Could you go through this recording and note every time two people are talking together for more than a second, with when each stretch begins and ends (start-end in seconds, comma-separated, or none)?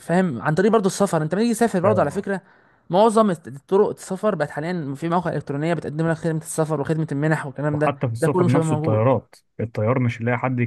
7.7-9.1